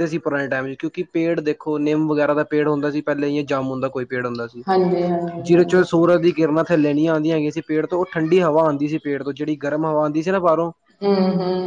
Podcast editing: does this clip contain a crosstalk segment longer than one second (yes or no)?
no